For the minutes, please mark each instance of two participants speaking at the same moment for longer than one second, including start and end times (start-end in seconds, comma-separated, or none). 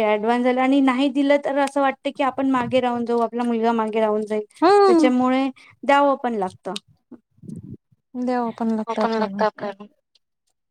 none